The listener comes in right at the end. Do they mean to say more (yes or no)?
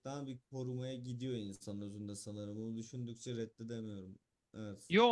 yes